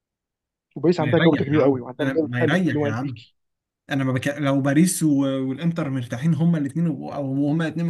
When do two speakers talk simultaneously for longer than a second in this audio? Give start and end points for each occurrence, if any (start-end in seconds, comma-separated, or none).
1.0-3.2